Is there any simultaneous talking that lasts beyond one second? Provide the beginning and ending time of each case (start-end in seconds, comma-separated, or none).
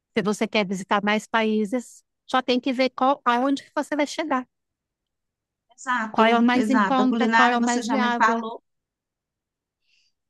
6.1-8.4